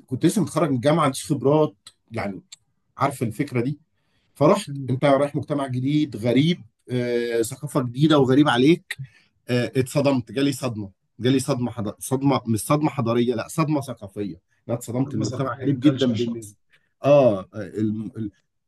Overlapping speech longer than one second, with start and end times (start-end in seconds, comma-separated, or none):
15.1-16.4